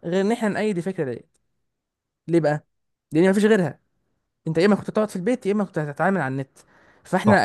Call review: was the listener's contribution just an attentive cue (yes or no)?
yes